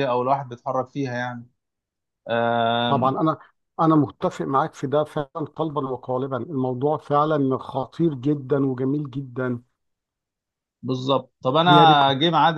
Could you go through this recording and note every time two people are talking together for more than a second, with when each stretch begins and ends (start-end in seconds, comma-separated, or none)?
none